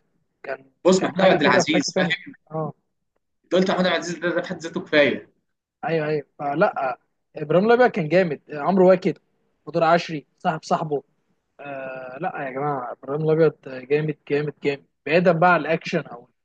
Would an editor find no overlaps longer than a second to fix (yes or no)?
no